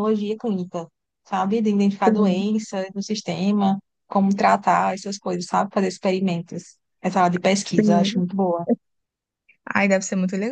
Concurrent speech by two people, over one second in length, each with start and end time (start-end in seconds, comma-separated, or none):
none